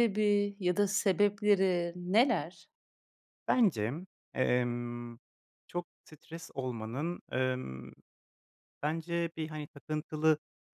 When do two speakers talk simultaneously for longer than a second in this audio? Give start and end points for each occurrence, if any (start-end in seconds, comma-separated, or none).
none